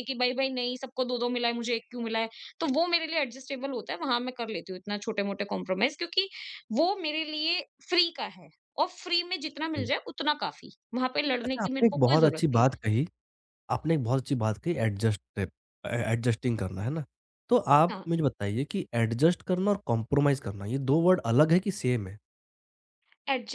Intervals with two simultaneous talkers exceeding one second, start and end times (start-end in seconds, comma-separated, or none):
11.4-12.8